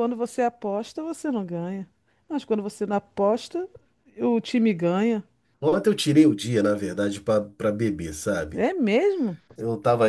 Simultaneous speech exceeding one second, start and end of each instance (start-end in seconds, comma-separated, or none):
none